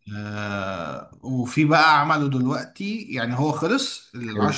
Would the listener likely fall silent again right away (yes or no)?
yes